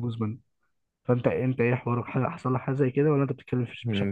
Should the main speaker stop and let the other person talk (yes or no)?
yes